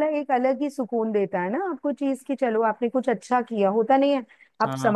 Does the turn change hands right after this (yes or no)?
no